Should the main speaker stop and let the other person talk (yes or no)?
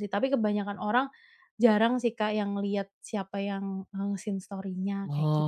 yes